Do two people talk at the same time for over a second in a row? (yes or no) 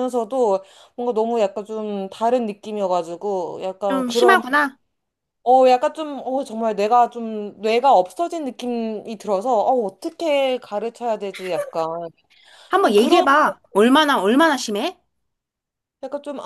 no